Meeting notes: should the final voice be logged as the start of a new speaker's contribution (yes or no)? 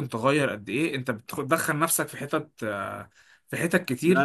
yes